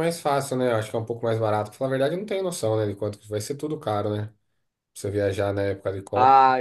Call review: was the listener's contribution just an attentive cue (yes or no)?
no